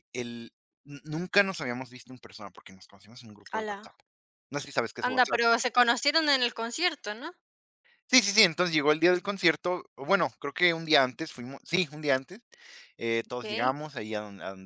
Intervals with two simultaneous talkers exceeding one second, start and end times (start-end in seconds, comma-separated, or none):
none